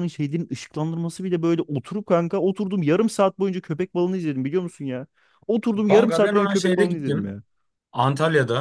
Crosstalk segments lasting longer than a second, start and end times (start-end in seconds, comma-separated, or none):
5.9-7.4